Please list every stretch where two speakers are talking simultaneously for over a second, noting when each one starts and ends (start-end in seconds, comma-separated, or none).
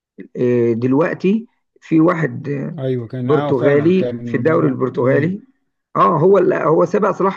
3.2-5.4